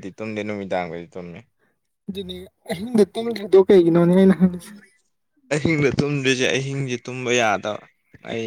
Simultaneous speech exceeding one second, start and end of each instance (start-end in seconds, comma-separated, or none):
none